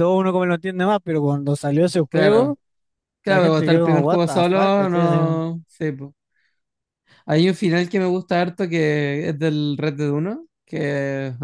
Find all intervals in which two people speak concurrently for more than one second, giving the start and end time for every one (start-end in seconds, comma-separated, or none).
3.2-5.4